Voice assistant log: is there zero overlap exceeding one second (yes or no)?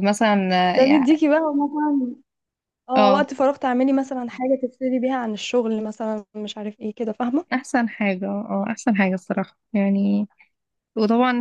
yes